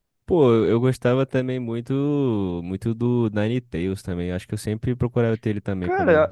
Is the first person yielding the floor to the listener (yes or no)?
yes